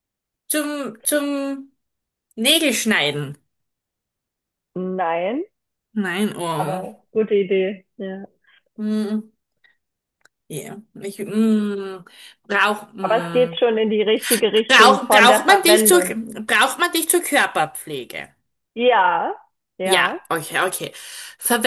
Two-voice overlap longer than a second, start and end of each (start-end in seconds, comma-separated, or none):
14.7-16.0